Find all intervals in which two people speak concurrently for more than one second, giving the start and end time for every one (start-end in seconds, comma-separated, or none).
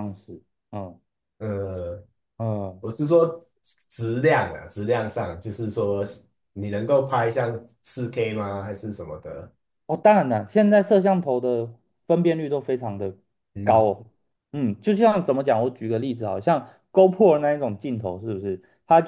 none